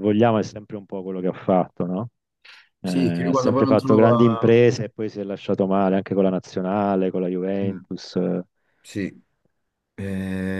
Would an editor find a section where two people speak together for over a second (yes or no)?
yes